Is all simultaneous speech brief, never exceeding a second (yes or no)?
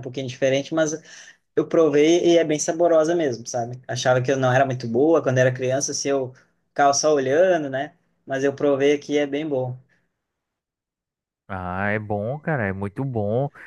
yes